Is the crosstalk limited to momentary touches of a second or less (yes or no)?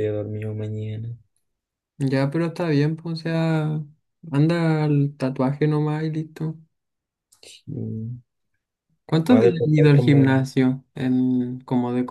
no